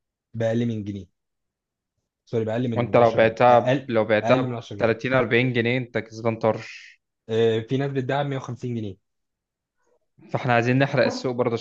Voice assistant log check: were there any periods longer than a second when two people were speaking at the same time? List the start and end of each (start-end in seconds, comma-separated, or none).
2.8-4.9